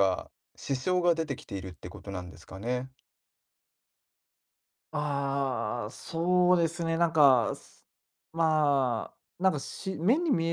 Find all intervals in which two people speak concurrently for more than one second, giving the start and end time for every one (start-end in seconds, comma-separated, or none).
none